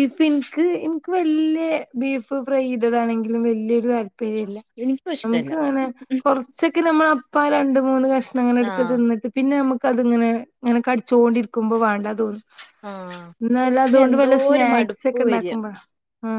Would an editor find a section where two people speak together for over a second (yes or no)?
yes